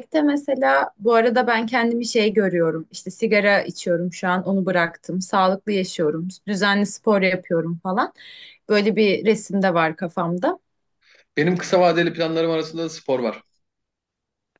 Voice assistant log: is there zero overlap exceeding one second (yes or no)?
yes